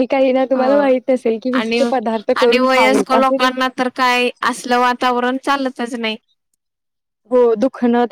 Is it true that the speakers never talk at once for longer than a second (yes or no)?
yes